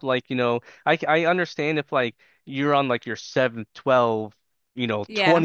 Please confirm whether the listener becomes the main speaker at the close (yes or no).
no